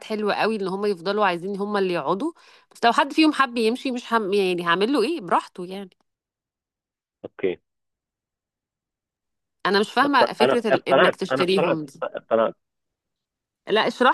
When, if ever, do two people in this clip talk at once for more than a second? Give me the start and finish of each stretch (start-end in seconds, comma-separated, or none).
10.0-12.0